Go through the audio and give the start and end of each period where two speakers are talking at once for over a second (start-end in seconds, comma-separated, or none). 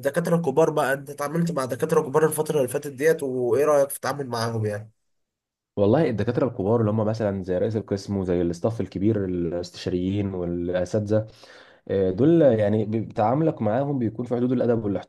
none